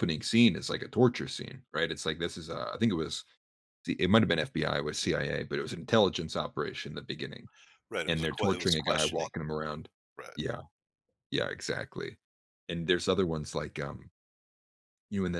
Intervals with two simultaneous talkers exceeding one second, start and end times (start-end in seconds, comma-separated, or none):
8.1-9.3